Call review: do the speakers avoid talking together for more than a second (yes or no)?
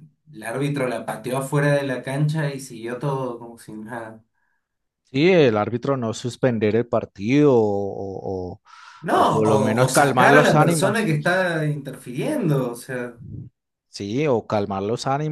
no